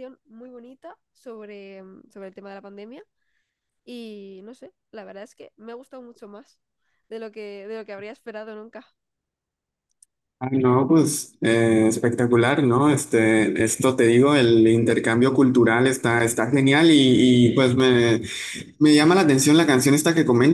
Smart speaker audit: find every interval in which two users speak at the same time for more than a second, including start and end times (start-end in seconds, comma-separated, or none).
none